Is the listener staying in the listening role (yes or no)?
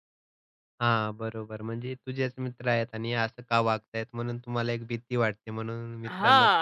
no